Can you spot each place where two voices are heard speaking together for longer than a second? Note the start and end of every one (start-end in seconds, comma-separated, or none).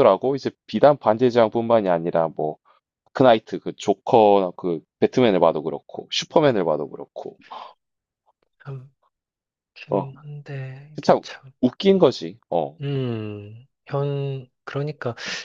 none